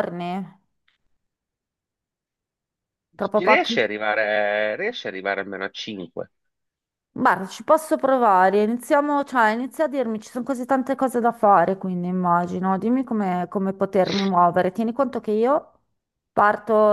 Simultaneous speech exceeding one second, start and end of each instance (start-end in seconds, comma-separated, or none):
none